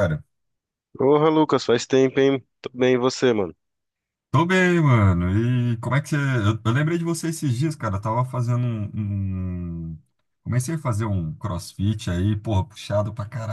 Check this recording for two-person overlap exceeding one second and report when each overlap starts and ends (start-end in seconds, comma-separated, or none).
none